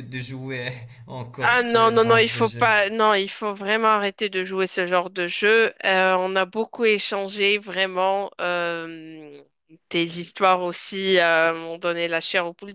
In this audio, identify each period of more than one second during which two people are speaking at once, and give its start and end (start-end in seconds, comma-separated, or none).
1.4-2.7